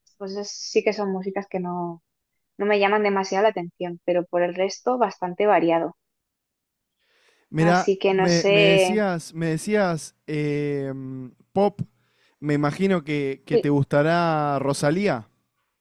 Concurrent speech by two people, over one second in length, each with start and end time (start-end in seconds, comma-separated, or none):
7.6-9.0